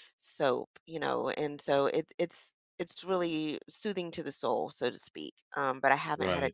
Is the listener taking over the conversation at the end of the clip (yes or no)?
no